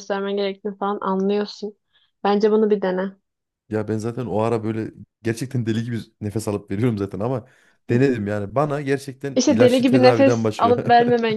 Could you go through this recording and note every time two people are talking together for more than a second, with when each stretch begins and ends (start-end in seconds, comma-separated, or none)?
9.3-10.8